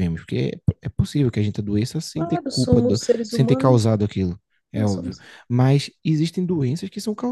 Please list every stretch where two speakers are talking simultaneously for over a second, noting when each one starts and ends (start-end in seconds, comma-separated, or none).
2.1-3.8